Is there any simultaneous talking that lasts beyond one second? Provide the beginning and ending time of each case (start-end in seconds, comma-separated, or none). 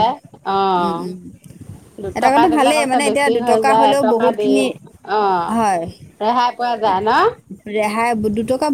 2.2-4.5